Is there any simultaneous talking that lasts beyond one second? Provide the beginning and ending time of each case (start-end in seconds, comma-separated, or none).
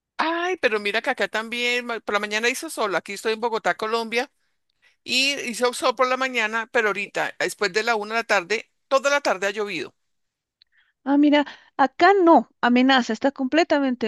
none